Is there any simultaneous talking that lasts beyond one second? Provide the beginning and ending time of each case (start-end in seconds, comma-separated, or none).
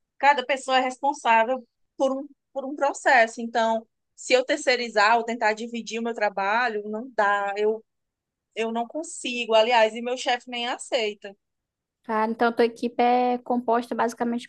none